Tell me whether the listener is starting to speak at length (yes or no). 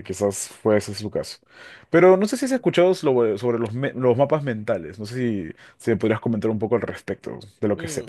yes